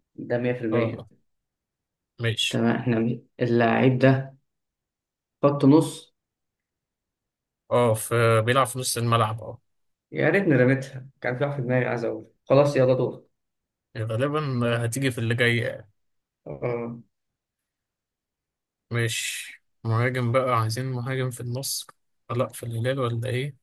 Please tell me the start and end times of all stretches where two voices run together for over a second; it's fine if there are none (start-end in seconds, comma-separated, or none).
none